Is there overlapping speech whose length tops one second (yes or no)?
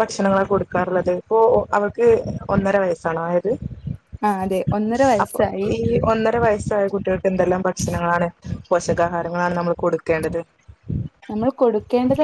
no